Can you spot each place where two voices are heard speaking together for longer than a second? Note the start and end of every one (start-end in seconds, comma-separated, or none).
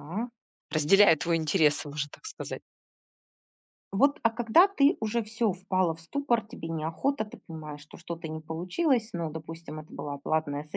none